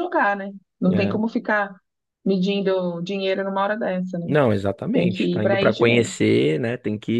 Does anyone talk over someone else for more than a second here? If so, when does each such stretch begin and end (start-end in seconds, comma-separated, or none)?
4.9-6.3